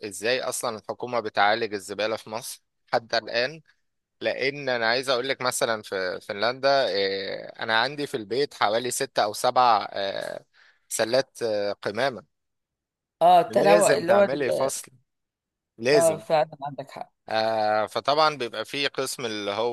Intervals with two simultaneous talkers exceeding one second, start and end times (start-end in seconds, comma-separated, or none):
13.5-14.7